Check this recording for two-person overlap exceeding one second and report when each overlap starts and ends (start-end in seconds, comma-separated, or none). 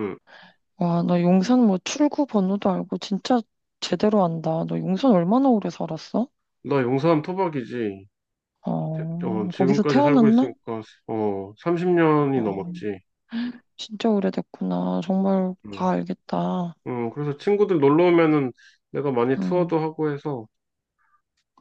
8.9-10.5